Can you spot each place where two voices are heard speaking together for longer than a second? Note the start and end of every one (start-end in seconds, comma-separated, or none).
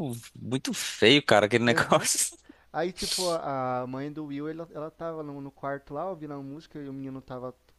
none